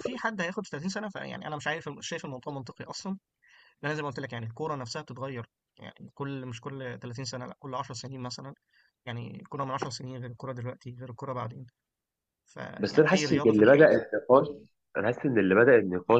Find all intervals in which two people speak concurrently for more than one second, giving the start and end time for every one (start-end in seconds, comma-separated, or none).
12.8-14.0